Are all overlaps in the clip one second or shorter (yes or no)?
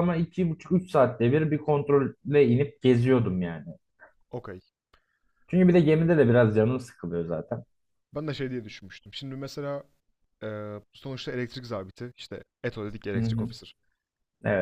yes